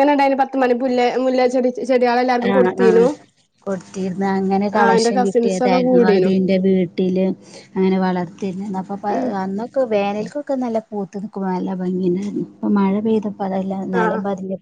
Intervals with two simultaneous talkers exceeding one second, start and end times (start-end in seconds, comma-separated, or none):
4.7-6.3